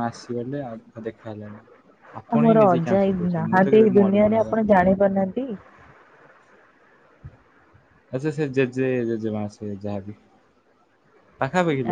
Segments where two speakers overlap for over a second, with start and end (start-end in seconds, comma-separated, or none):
2.4-4.7